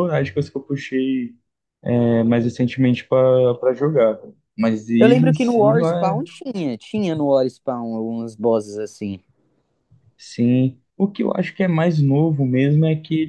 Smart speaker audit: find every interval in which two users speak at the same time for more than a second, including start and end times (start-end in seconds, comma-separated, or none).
5.0-6.2